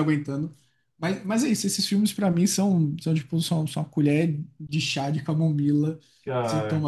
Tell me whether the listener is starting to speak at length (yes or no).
no